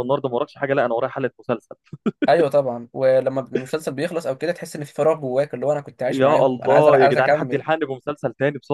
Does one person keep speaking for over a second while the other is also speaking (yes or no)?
yes